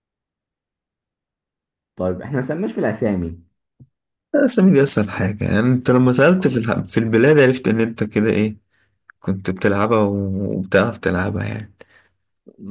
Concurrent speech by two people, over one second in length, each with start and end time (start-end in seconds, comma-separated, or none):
none